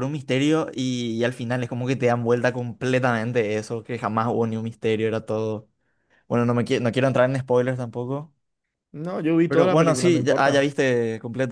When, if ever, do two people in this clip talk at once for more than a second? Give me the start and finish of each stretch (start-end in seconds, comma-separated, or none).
9.5-10.7